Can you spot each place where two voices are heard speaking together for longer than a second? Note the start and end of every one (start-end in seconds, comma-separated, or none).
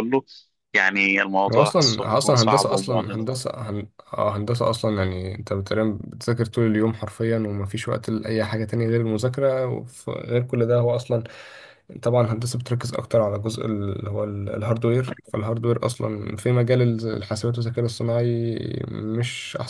1.5-3.3